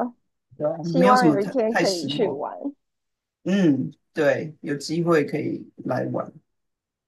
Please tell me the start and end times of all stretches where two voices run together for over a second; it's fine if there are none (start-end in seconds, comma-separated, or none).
0.8-2.4